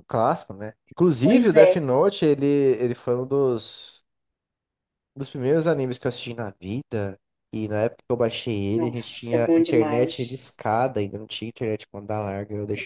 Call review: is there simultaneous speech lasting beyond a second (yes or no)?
yes